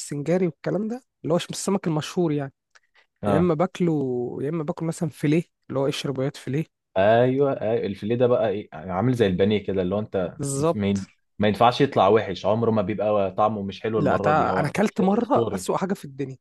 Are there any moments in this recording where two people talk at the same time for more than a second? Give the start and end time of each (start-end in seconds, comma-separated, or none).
14.0-15.7